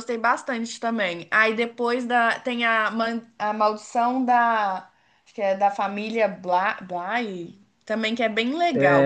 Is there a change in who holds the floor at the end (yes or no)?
yes